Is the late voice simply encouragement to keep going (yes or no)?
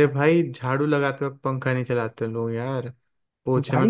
no